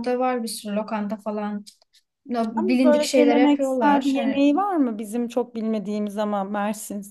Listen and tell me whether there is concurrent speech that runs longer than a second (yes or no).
yes